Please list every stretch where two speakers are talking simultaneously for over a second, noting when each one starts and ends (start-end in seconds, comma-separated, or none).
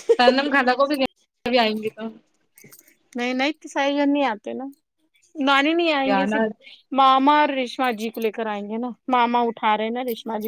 none